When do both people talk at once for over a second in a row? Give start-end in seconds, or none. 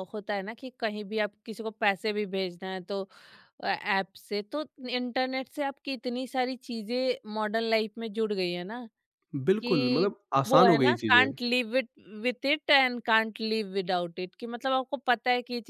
9.6-11.3